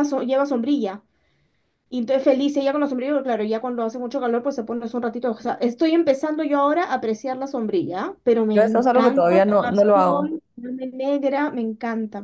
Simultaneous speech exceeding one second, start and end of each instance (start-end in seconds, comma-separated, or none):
8.5-10.4